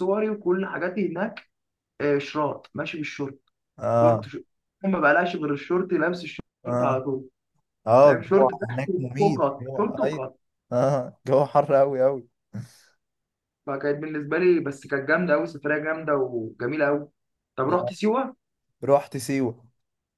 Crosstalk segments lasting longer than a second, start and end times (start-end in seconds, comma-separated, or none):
8.0-10.2